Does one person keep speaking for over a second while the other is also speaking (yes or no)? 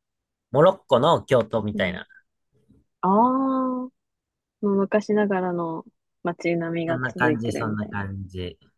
yes